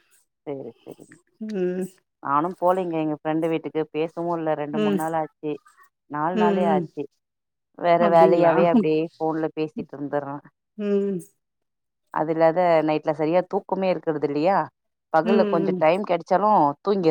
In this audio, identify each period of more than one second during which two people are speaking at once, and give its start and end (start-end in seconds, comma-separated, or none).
none